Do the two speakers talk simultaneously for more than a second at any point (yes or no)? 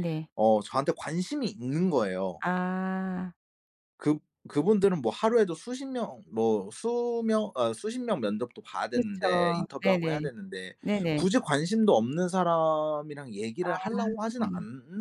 yes